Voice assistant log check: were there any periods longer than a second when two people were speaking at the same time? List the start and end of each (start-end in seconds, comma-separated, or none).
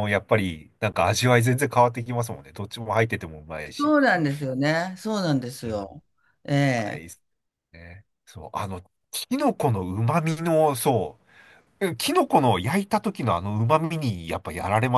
none